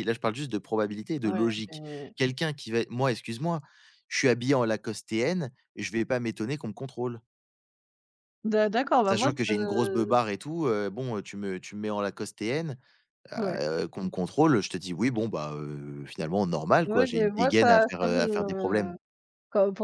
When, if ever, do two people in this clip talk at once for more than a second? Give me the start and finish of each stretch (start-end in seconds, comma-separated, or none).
16.9-18.9